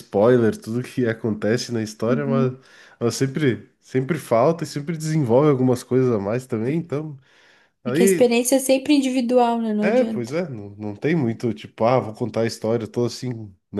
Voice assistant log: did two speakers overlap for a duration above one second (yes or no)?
no